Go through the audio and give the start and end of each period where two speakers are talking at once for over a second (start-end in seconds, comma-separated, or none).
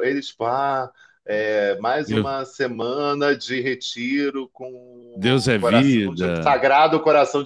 5.1-6.6